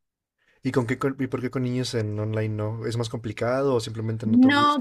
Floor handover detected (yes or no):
yes